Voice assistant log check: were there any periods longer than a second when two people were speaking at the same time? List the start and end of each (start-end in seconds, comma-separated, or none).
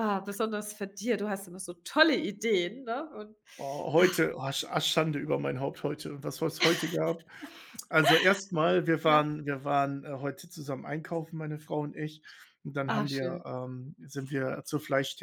none